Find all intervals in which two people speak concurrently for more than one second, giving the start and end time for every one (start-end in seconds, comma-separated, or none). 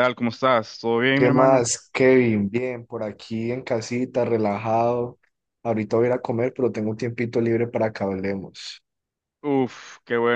none